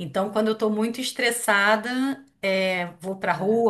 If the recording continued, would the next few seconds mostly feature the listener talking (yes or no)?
no